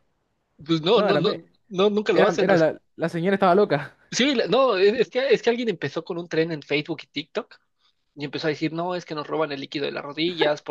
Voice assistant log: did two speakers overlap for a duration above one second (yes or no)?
no